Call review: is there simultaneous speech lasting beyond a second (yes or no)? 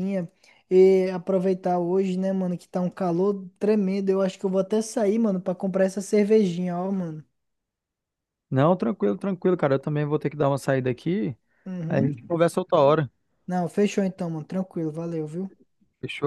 no